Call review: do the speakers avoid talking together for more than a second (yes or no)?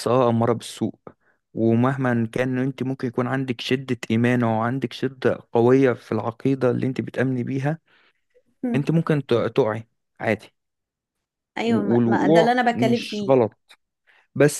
no